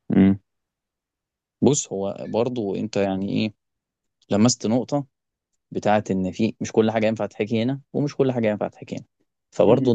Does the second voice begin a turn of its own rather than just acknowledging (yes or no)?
no